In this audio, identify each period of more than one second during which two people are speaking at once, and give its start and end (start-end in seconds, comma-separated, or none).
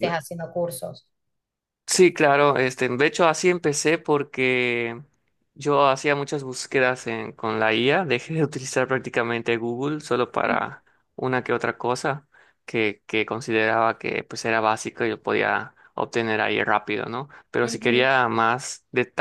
none